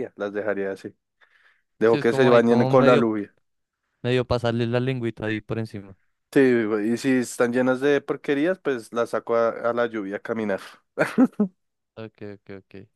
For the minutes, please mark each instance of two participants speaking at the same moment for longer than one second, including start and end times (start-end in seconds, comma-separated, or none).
1.8-3.1